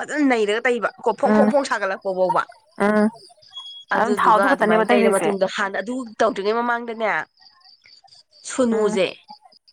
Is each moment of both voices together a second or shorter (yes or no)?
no